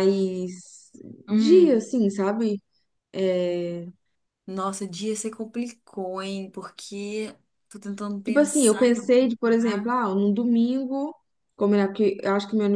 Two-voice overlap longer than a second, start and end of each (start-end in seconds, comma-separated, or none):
8.2-9.9